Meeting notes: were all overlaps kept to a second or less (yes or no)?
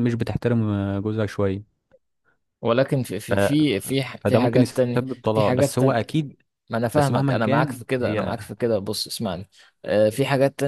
no